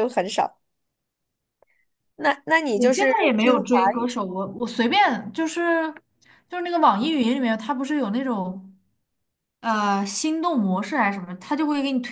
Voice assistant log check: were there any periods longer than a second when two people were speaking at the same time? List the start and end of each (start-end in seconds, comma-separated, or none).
2.7-4.1